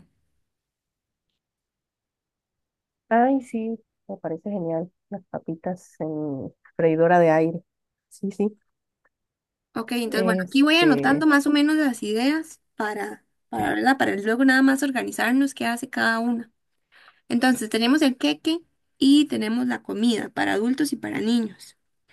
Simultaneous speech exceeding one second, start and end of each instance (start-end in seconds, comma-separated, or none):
10.1-11.3